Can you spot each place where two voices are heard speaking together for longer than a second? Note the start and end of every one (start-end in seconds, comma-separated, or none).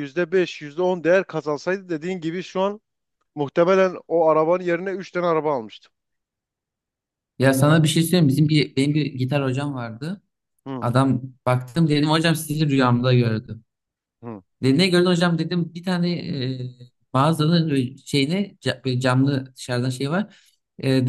none